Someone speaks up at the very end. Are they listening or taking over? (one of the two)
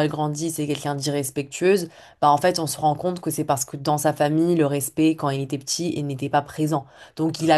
listening